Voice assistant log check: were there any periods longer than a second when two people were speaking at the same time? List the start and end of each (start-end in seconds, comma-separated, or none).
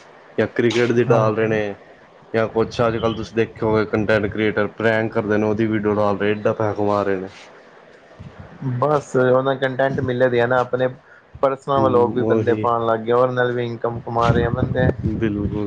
none